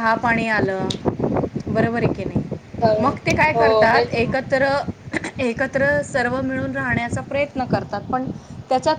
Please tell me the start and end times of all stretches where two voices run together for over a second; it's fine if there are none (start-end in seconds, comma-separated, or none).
3.0-4.3